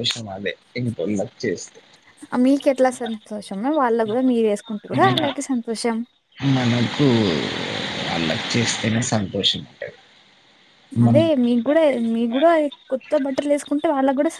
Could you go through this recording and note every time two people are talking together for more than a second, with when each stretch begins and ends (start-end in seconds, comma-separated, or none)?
none